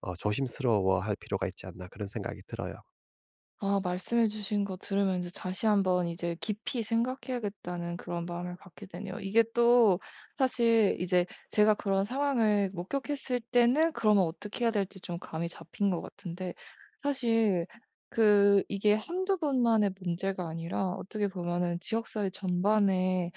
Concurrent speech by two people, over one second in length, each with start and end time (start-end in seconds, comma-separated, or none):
none